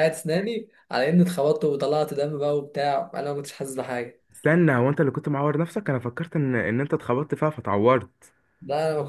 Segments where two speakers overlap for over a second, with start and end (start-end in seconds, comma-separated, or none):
none